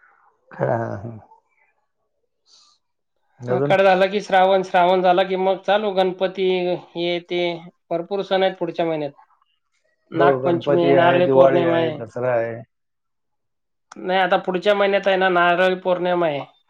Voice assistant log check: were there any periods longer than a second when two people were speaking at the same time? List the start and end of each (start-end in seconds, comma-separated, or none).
10.2-11.6